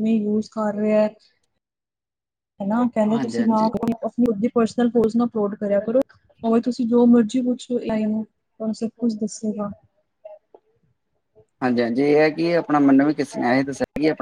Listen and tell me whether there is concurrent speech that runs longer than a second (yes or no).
no